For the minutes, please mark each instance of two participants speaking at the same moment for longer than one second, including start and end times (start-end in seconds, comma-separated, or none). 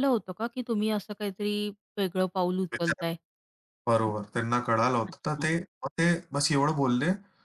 none